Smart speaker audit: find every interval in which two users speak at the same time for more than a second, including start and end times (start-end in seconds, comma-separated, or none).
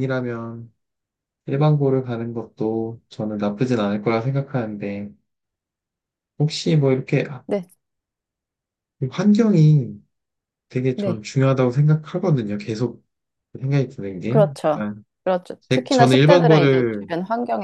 15.7-17.1